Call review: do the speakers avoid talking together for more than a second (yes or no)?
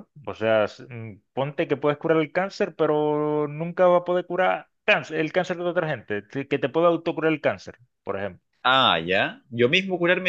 yes